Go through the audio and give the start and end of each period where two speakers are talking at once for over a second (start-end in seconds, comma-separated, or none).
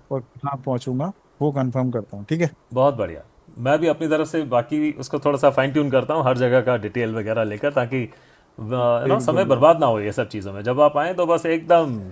none